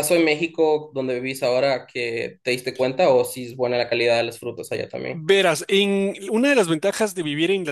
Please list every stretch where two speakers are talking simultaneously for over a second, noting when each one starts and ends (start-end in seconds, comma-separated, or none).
none